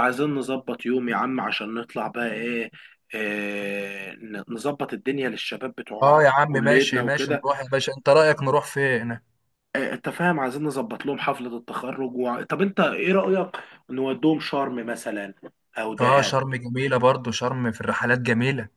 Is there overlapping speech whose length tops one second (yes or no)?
yes